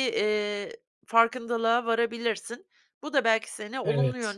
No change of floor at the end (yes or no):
yes